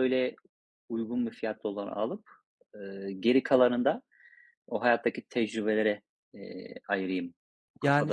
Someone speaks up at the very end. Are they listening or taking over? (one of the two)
taking over